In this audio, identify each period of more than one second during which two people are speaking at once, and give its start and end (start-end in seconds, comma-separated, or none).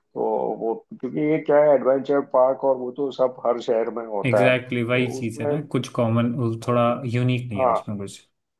4.2-5.5